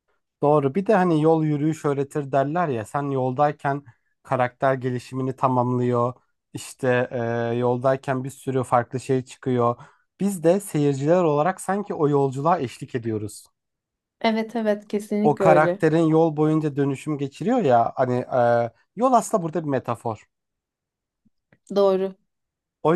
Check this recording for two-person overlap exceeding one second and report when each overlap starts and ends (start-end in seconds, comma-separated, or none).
none